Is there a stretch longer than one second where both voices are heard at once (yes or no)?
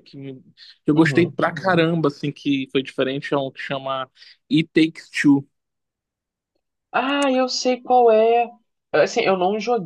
no